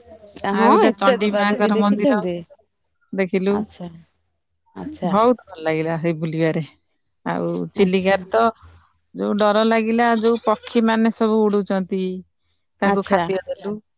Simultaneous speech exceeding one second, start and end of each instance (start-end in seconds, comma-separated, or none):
0.6-2.2